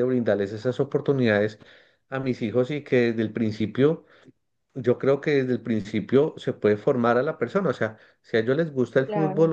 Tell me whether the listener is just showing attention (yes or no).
yes